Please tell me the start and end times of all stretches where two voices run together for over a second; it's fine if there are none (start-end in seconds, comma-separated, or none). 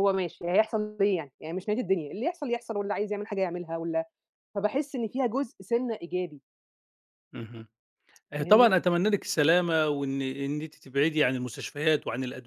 none